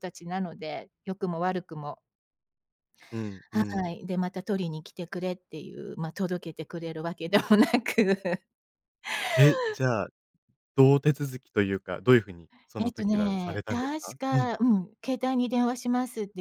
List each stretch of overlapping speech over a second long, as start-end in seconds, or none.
12.8-14.5